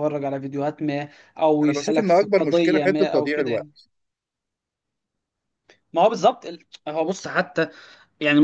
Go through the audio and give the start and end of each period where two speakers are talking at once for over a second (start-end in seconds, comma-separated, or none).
1.6-3.7